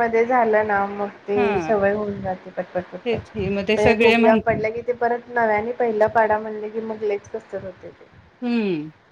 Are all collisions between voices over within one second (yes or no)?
no